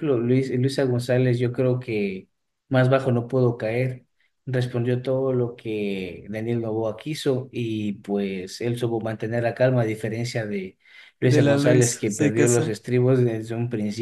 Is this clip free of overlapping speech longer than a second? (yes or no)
no